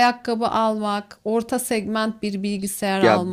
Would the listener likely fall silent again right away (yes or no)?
no